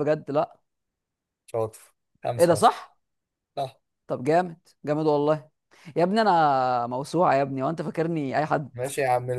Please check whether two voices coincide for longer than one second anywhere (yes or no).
no